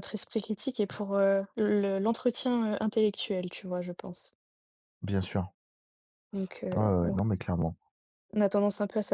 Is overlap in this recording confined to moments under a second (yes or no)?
yes